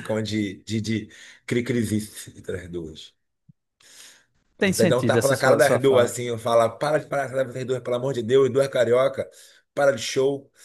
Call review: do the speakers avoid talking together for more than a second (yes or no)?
no